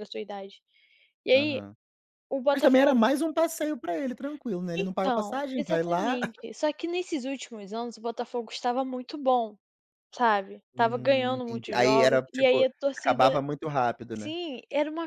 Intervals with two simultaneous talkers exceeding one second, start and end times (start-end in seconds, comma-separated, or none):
4.8-6.2, 10.7-13.2